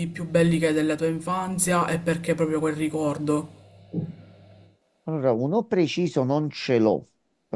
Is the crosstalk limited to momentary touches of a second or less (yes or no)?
yes